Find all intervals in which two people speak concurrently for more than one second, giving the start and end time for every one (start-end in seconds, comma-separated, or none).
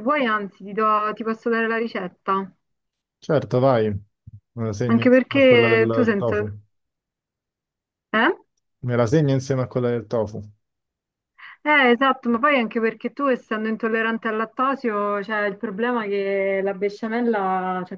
4.8-6.6